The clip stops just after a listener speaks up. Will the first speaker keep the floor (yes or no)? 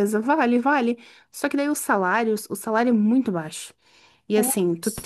yes